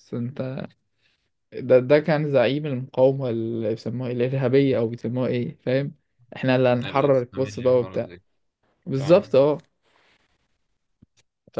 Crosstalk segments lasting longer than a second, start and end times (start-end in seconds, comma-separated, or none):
6.8-8.1